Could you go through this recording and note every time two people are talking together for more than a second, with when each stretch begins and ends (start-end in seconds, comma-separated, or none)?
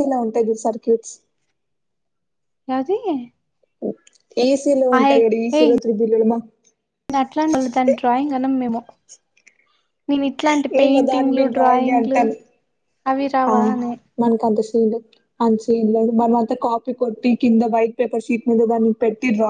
10.8-12.2